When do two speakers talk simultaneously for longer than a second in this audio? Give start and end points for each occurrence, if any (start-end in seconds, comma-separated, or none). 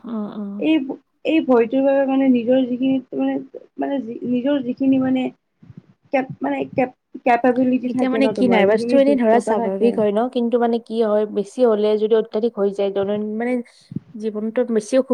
7.9-9.9